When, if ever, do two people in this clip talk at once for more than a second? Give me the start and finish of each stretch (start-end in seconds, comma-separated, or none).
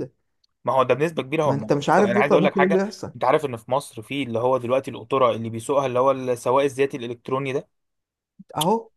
1.4-3.1